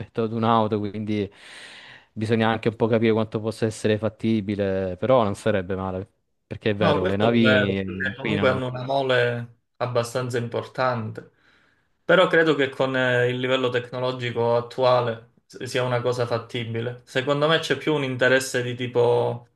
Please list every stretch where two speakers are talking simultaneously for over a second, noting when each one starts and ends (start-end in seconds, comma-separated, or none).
6.8-8.7